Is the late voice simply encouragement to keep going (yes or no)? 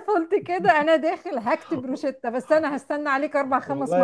no